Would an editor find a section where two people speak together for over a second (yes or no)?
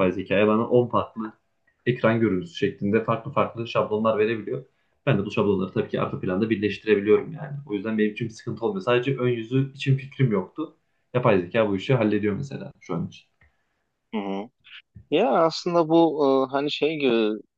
no